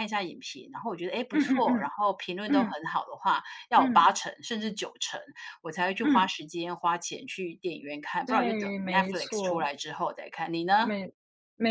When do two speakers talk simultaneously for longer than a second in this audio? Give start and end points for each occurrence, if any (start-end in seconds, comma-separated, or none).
8.2-9.7